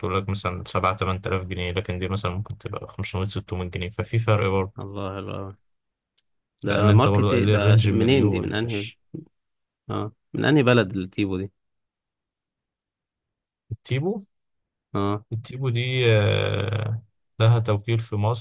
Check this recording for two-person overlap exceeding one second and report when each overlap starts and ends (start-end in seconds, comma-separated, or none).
6.7-8.9